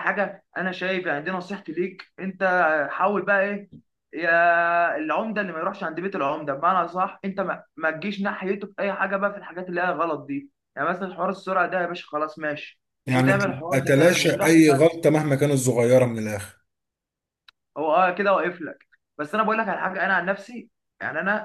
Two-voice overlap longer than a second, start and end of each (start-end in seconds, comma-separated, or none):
13.1-14.9